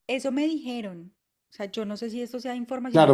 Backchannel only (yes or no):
no